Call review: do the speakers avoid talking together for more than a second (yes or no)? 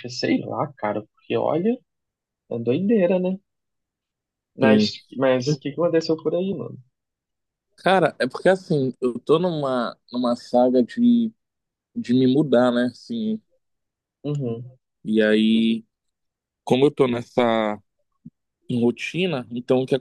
yes